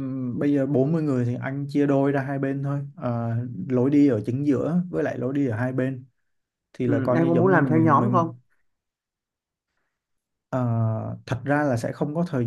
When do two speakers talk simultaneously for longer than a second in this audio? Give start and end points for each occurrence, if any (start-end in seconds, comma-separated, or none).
6.8-8.3